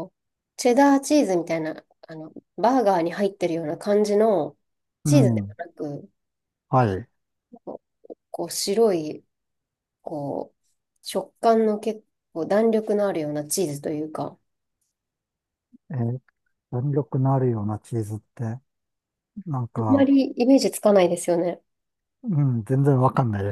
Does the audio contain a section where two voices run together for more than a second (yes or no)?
no